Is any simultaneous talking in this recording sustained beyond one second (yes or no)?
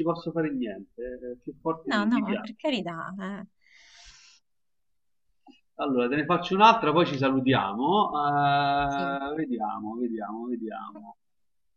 no